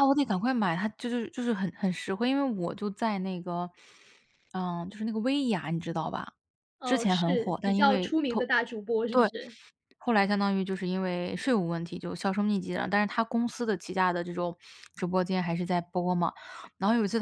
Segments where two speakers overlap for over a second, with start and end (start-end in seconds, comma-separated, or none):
6.8-8.5